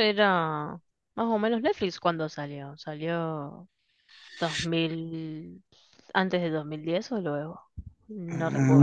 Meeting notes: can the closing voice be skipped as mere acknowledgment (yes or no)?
no